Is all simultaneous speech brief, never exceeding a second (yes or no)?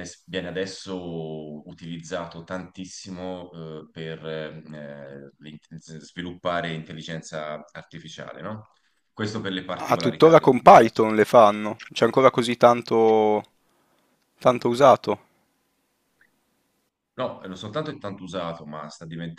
no